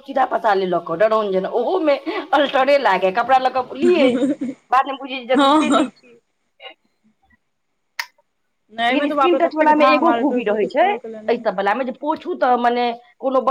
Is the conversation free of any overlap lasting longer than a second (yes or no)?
no